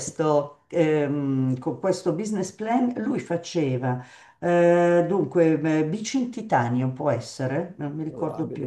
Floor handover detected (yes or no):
no